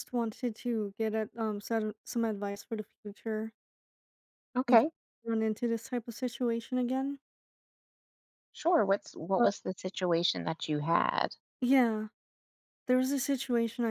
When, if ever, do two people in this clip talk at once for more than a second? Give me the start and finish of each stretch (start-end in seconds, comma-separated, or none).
none